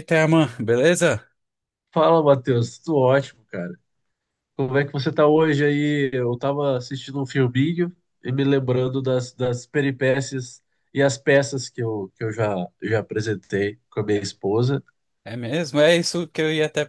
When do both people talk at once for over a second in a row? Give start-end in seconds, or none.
none